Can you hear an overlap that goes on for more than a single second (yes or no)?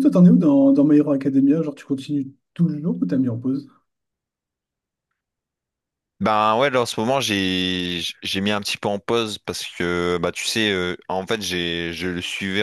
no